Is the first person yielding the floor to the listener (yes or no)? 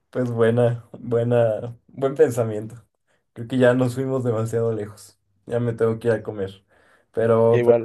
no